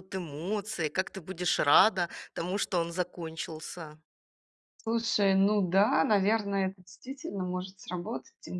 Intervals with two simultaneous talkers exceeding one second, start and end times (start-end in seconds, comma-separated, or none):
none